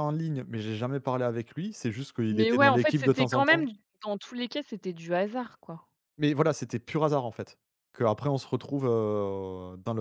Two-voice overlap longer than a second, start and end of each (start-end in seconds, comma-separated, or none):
2.3-3.6